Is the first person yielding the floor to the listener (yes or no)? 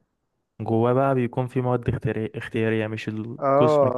yes